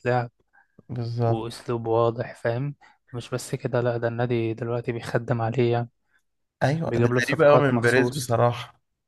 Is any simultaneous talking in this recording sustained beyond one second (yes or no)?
yes